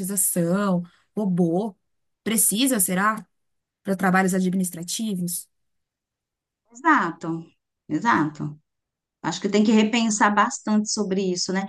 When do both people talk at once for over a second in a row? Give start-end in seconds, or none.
none